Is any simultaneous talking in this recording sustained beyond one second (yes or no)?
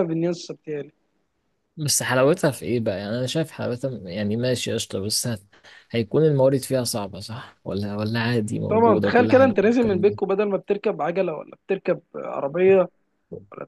yes